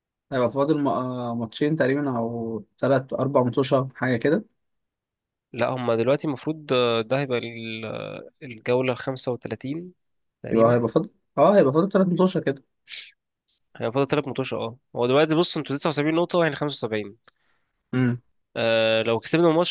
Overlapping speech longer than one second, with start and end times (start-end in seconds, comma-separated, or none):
none